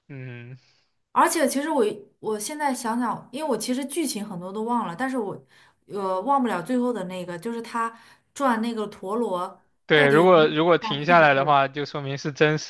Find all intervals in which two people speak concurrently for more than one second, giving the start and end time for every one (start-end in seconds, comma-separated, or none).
9.9-11.5